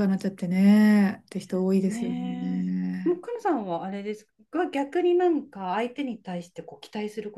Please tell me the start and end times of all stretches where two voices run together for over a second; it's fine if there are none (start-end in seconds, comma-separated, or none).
1.9-3.2